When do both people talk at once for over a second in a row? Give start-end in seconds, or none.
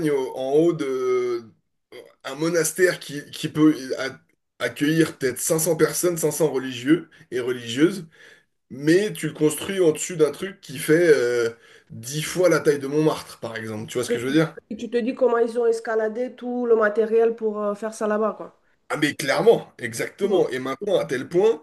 none